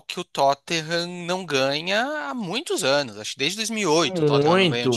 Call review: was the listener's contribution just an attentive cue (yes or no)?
no